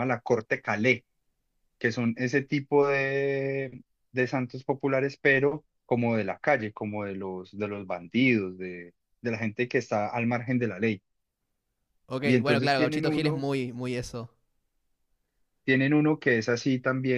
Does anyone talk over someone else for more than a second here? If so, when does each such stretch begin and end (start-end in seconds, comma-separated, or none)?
12.2-13.5